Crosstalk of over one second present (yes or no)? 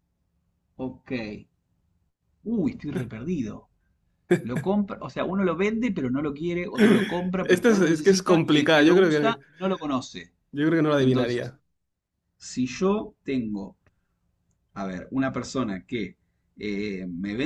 yes